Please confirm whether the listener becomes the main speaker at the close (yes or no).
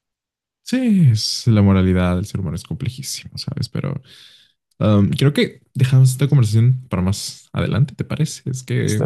no